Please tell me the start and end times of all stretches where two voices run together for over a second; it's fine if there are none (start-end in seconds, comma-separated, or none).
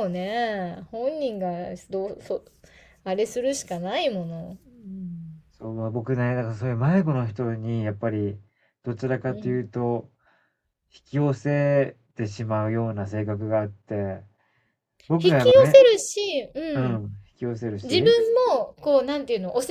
none